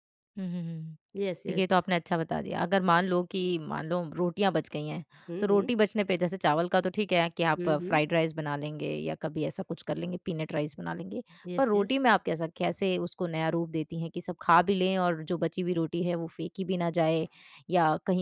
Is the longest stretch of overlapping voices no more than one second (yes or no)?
yes